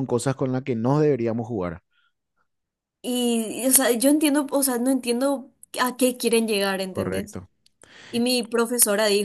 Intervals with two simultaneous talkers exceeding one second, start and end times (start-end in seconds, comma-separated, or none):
none